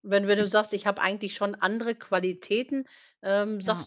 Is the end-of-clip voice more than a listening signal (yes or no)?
no